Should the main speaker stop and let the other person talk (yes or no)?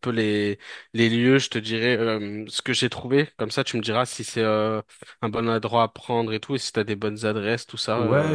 yes